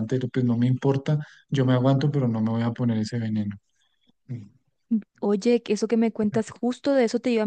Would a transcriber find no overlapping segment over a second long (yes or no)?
yes